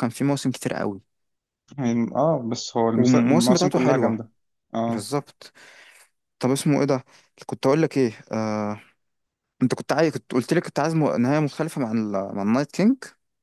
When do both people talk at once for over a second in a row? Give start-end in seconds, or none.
3.0-4.2